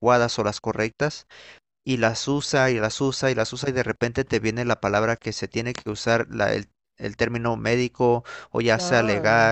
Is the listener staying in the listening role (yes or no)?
yes